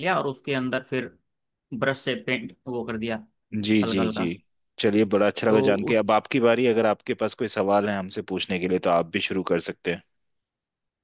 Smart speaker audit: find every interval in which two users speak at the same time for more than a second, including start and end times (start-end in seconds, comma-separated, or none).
none